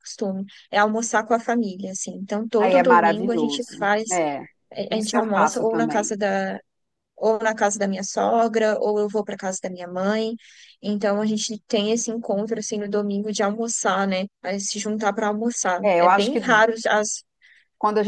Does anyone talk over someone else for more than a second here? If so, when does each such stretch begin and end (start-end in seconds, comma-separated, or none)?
2.6-4.2, 4.9-6.1